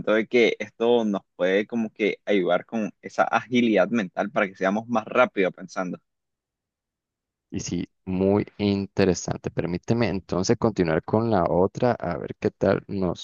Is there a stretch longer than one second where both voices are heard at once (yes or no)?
no